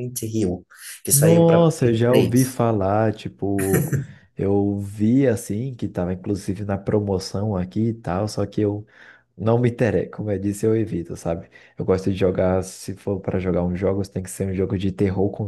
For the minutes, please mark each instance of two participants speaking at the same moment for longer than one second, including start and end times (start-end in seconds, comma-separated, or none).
1.1-2.6